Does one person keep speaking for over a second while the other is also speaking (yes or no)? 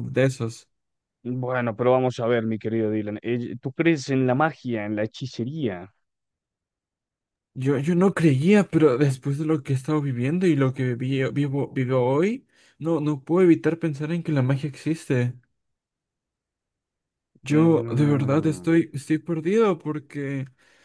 yes